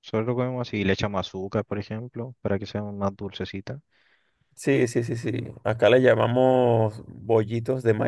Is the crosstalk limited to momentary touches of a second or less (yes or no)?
yes